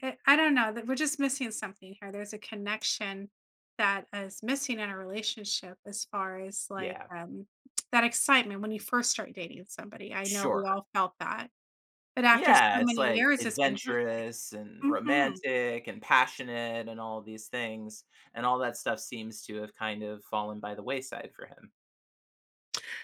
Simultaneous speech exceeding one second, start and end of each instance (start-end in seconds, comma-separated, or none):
12.3-14.0